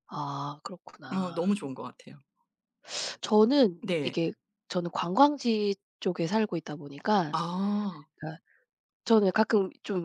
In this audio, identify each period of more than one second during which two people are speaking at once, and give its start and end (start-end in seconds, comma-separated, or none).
none